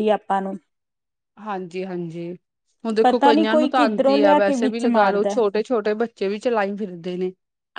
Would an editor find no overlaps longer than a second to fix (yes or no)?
no